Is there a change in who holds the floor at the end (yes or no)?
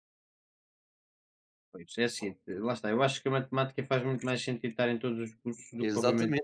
yes